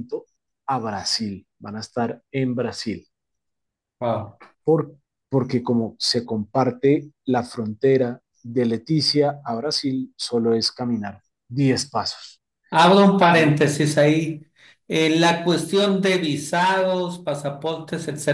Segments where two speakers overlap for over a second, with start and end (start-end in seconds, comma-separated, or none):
none